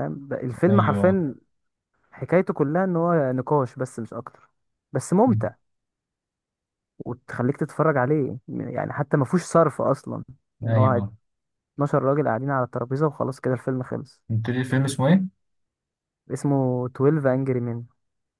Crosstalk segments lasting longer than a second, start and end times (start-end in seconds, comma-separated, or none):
none